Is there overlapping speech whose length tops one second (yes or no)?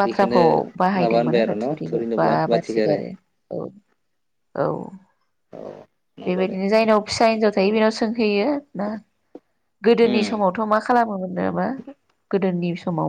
yes